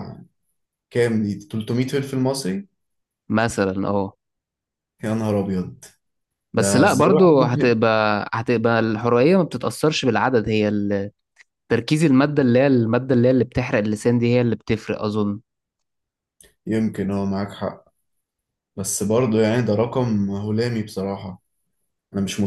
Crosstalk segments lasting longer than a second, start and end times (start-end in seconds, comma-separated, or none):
6.6-7.8